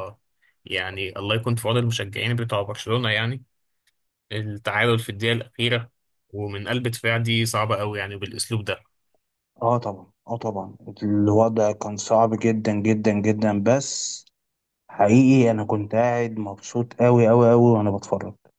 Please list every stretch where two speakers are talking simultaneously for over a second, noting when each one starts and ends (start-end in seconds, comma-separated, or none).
none